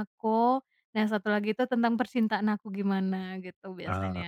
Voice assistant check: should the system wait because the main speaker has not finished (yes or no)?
no